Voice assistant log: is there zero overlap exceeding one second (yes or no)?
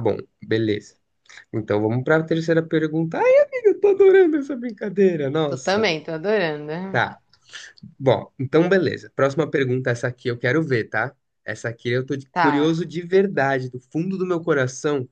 yes